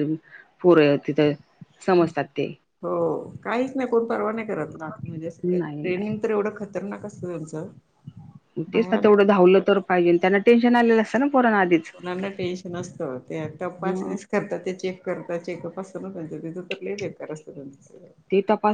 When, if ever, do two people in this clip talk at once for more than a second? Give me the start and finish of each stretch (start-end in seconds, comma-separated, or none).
none